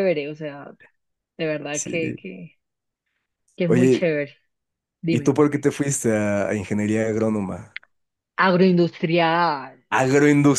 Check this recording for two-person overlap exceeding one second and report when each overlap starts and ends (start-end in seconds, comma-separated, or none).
none